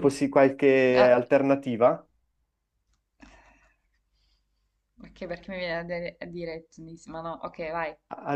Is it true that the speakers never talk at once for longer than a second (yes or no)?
yes